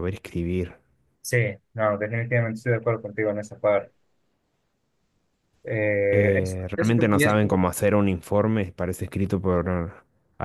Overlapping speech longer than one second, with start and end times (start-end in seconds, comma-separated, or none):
6.1-7.4